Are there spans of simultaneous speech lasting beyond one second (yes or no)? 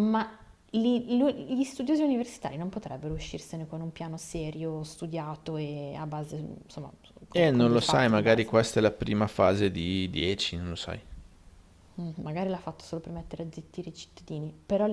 yes